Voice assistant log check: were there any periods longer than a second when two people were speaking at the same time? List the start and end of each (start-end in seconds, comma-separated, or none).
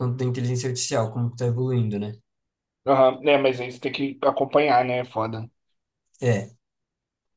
none